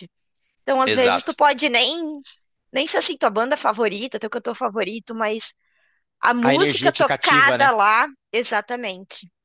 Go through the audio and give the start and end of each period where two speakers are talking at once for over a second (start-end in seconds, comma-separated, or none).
6.4-7.7